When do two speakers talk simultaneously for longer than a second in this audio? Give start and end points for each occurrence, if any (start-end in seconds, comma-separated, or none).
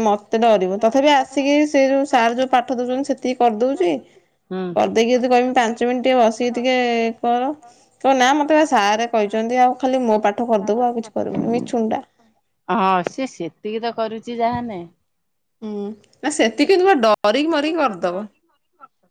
none